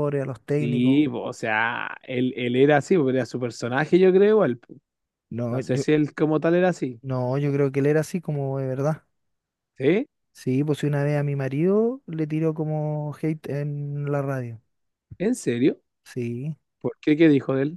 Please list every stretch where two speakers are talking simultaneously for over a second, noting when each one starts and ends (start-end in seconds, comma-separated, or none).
none